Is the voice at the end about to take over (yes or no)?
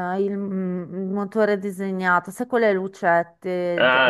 yes